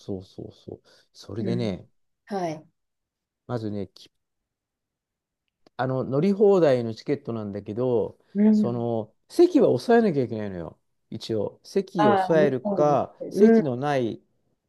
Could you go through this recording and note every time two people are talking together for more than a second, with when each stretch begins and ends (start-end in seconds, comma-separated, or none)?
12.0-13.6